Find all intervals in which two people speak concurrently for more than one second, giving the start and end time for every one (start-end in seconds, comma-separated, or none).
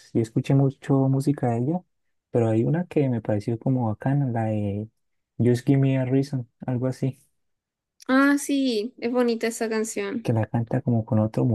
none